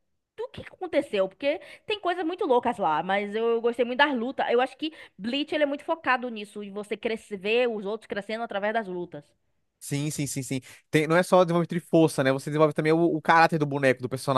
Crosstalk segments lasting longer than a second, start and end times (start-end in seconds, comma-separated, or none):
none